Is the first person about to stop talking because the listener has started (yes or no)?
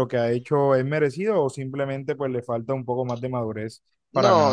yes